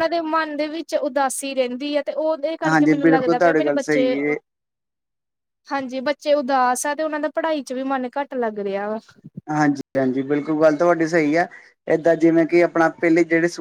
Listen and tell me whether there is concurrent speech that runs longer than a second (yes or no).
yes